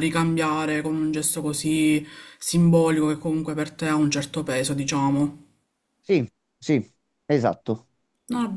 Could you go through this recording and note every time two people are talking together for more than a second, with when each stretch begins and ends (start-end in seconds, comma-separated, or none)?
none